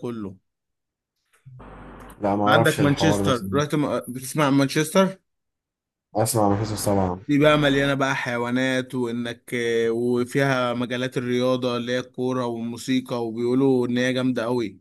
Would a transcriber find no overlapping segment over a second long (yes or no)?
no